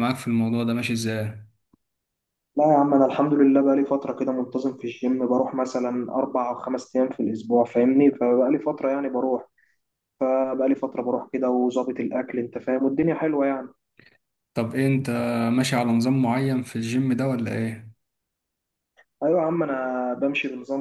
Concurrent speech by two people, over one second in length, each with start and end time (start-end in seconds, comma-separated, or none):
none